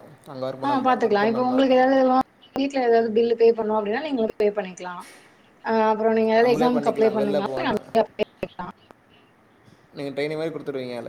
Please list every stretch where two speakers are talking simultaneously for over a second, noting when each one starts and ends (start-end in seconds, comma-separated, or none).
6.4-7.8